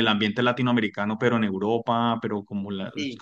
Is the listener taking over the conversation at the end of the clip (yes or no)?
no